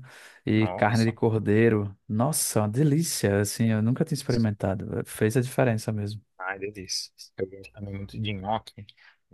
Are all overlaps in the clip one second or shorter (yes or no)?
yes